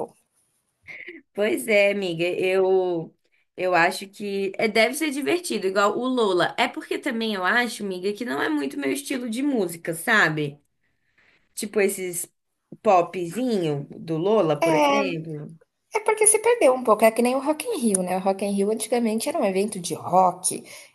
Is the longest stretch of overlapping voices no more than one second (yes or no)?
yes